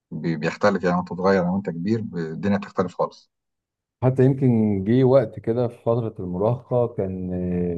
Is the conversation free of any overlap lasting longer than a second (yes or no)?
yes